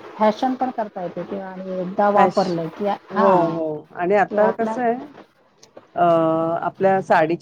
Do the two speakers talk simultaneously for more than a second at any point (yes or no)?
no